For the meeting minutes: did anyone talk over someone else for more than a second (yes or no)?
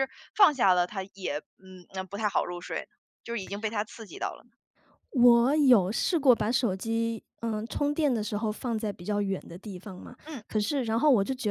no